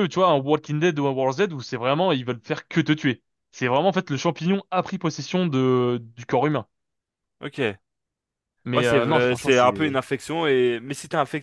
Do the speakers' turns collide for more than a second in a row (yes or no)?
yes